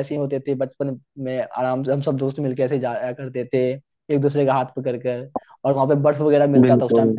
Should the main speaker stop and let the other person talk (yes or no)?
no